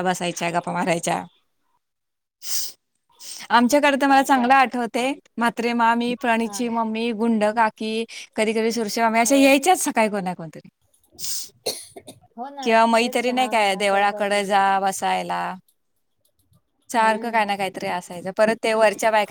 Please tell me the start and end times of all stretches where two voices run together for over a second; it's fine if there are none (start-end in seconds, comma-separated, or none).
12.6-14.3